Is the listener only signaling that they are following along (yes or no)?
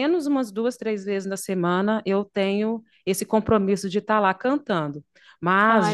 yes